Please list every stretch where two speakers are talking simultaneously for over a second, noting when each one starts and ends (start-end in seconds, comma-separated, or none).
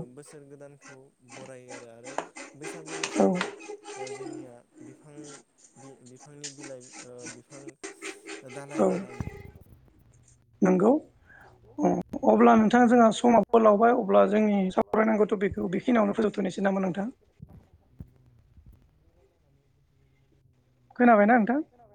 13.1-17.1